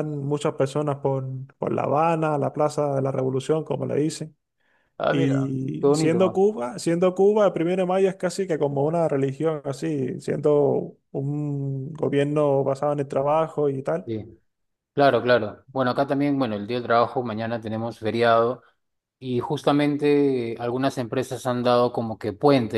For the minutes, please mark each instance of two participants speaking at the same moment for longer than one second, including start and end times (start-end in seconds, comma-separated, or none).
5.1-6.4